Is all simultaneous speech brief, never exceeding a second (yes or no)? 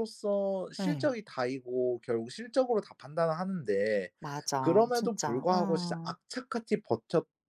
no